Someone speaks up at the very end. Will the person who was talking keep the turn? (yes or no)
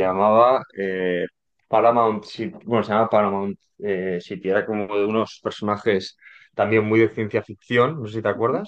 no